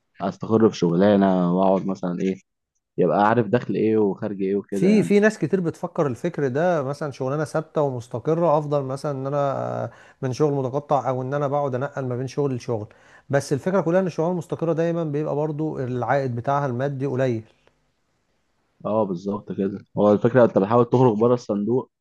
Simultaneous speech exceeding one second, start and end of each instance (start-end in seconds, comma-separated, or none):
none